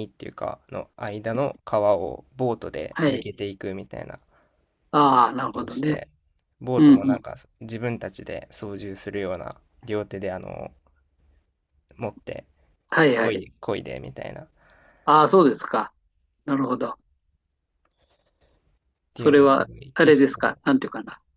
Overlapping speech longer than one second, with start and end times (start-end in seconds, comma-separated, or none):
19.1-20.6